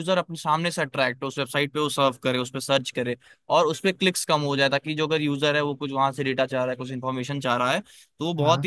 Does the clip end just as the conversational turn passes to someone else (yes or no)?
no